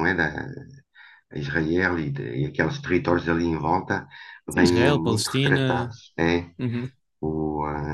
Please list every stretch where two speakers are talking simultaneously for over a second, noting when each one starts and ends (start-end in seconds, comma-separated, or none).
4.5-6.0